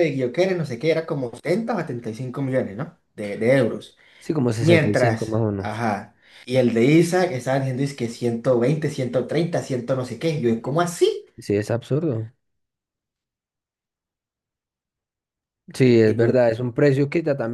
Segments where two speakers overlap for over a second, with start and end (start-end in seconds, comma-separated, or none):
4.6-5.8